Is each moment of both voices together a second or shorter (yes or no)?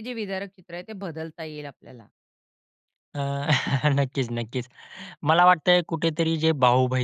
yes